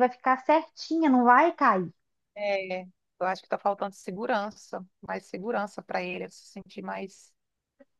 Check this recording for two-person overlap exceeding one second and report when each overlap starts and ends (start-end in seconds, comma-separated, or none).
none